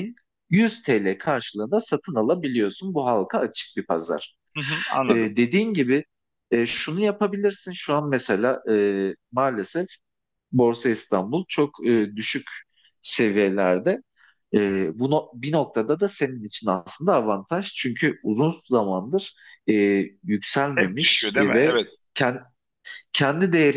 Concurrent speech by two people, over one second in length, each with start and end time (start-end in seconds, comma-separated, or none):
20.7-21.9